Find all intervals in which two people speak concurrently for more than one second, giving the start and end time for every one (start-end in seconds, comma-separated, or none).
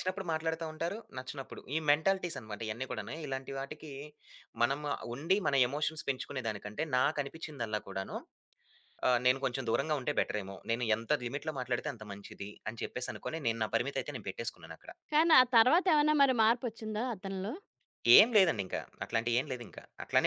none